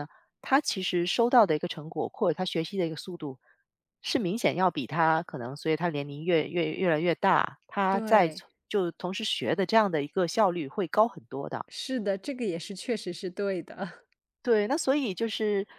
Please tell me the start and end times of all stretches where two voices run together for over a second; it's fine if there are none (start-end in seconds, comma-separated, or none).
none